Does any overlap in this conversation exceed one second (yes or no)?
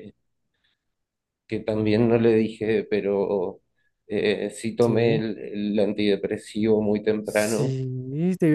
no